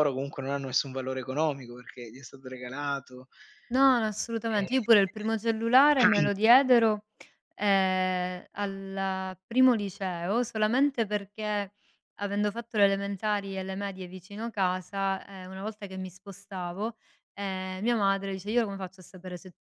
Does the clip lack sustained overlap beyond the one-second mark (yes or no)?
yes